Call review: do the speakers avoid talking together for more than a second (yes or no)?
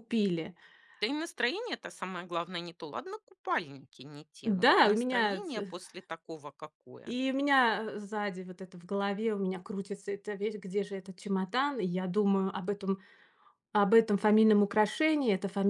no